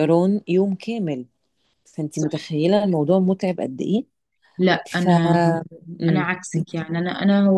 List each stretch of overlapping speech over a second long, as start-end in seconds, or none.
none